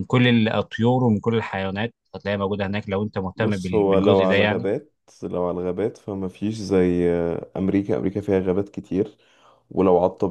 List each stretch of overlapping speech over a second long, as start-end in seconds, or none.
3.4-4.7